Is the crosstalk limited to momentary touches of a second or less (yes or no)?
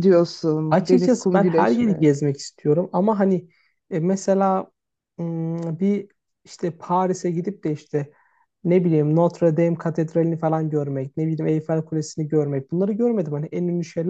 no